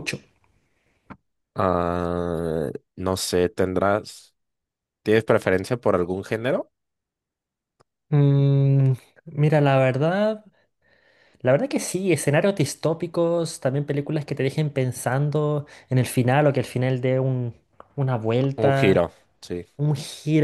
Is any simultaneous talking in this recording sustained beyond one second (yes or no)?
no